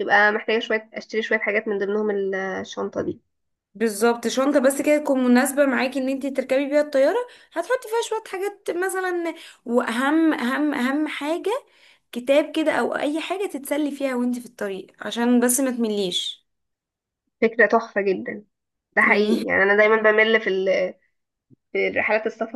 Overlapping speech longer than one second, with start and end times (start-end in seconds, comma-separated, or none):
none